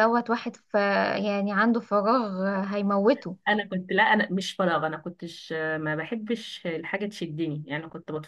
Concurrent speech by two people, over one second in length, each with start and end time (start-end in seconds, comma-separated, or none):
none